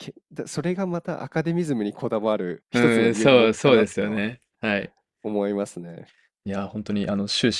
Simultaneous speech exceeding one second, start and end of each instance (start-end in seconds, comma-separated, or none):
2.7-4.2